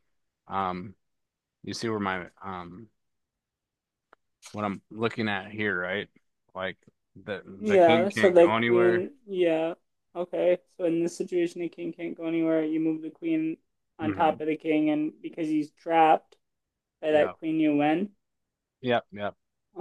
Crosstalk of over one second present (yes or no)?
yes